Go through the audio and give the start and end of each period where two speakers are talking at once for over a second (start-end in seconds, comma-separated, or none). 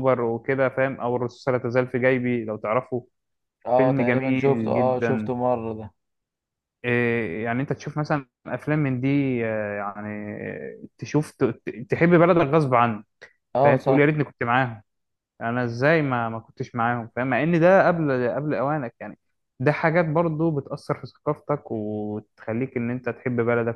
3.8-5.3